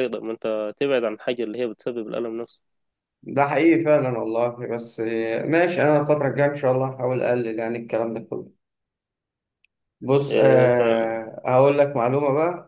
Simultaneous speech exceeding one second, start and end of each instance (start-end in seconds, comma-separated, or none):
none